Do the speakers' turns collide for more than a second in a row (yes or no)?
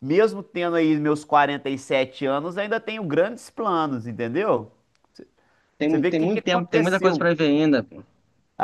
yes